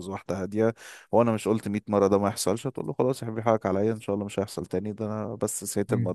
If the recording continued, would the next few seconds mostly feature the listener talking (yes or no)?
no